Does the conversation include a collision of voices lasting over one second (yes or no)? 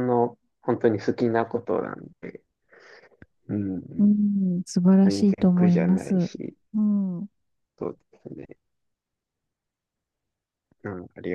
yes